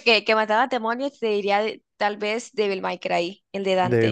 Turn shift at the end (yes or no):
yes